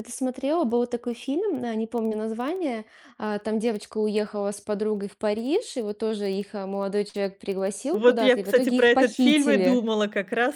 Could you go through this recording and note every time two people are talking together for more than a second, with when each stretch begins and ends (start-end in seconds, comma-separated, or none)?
7.9-9.8